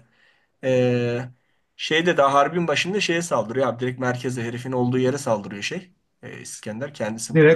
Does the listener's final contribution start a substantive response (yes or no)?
yes